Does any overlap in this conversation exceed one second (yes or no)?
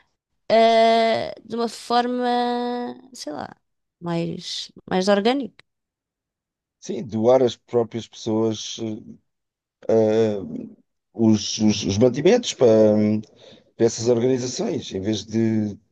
no